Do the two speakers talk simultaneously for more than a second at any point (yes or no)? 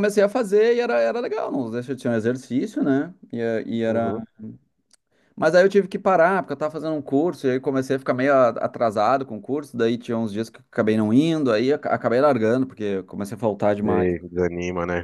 no